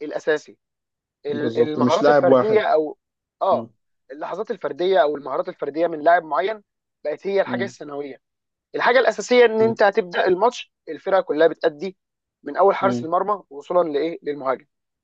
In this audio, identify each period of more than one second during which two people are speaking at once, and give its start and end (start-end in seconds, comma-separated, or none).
1.3-2.6